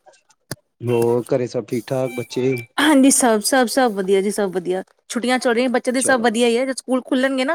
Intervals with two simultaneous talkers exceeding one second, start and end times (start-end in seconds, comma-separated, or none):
none